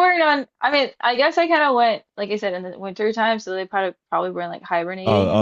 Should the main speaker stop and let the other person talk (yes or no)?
yes